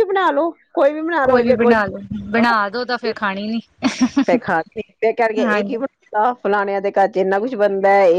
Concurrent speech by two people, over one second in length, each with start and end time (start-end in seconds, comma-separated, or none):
none